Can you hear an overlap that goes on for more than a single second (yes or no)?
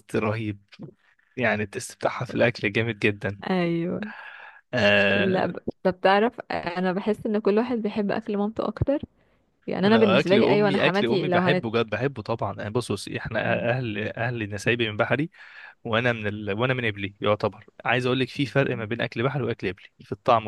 yes